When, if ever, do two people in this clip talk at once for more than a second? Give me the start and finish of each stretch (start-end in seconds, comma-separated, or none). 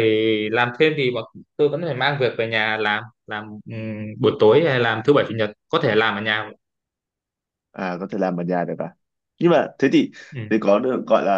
none